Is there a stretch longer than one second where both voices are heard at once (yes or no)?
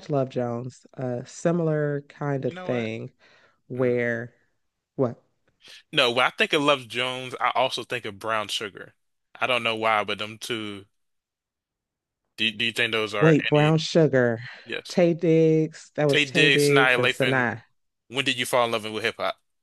yes